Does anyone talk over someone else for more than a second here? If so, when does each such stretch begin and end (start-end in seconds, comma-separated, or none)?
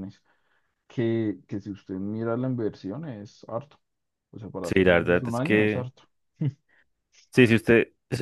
4.6-5.9